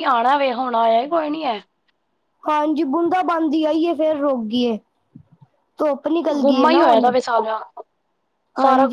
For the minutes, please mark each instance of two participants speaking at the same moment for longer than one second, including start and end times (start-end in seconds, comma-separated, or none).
none